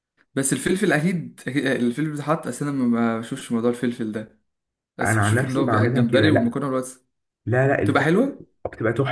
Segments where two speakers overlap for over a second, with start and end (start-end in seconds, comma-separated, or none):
5.0-6.6